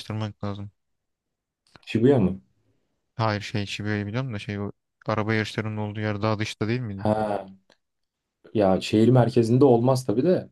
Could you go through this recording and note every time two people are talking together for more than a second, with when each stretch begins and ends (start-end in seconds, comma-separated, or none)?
none